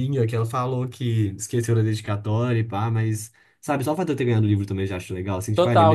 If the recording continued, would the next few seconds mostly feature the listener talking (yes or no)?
yes